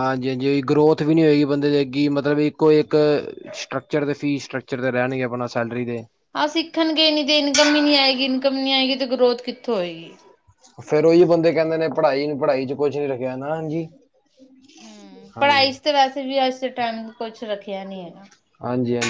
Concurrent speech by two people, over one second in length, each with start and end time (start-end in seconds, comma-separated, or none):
none